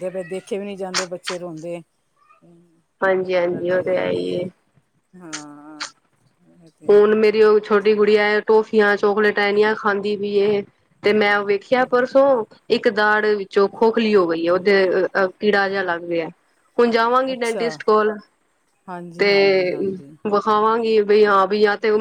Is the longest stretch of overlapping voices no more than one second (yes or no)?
no